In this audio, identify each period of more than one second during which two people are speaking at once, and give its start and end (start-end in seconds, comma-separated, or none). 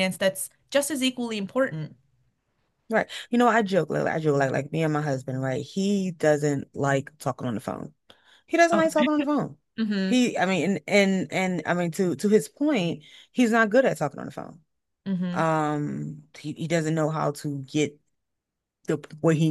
none